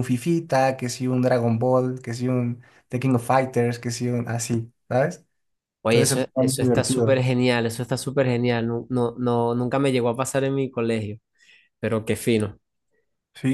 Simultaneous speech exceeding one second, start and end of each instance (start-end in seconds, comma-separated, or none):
5.8-7.2